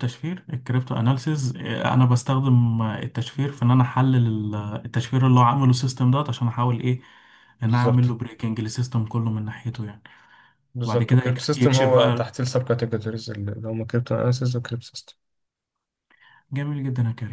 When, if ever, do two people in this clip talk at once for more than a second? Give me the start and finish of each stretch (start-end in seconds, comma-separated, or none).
10.8-12.3